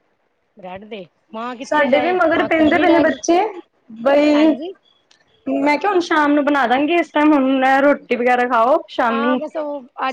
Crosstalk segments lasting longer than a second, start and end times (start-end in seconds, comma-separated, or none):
1.7-3.2